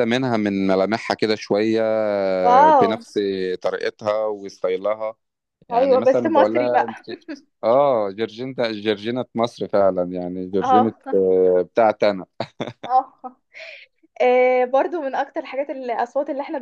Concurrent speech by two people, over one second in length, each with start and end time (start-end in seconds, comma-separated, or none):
5.7-7.0